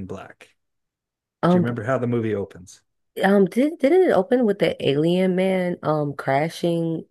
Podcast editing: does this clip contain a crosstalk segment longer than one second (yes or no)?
no